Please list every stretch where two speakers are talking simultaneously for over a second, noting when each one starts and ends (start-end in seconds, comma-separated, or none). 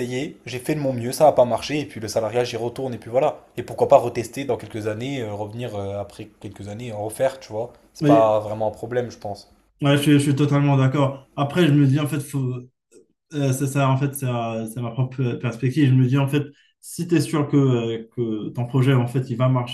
none